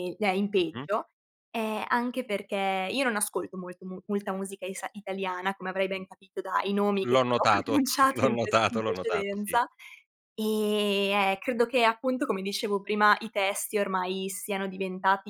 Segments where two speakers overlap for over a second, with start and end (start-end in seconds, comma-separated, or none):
7.0-9.6